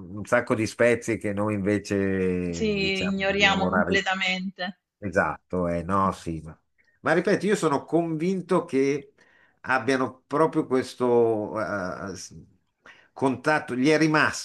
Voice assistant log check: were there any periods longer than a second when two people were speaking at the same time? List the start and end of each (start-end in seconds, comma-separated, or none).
2.8-4.0